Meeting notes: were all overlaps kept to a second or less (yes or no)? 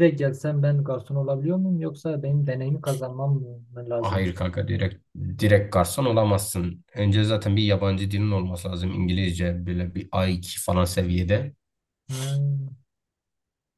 yes